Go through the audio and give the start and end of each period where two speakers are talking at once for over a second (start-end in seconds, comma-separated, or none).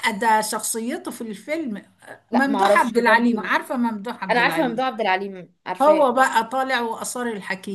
2.3-3.5